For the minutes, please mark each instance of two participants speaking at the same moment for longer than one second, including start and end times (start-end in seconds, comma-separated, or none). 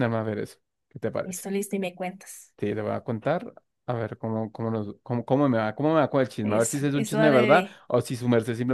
6.4-7.8